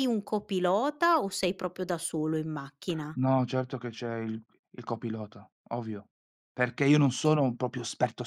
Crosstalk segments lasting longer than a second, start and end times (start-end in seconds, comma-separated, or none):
none